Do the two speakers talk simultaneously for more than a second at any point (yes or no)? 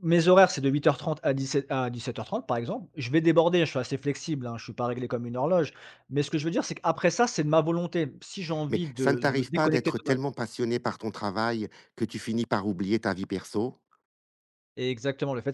yes